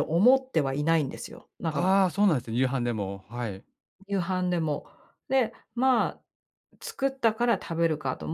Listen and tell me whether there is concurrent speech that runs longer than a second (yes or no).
no